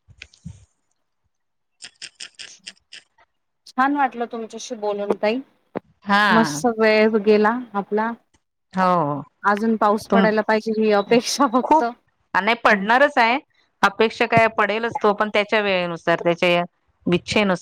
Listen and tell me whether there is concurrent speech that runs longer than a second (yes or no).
no